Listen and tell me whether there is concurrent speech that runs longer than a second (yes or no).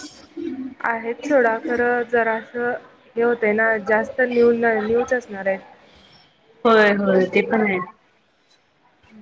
no